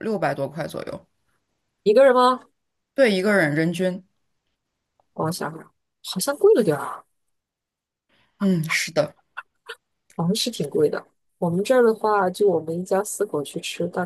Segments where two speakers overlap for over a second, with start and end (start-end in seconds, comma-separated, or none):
none